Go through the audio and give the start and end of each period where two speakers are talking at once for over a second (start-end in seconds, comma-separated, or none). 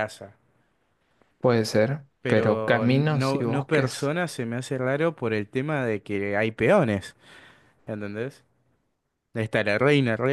2.2-4.1